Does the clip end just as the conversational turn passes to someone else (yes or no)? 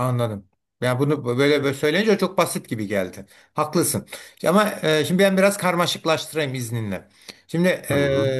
no